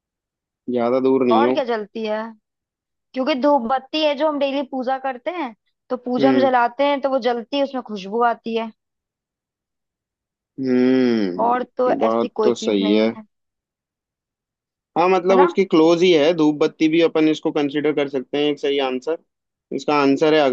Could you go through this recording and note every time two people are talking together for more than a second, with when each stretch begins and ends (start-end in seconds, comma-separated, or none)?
11.4-13.1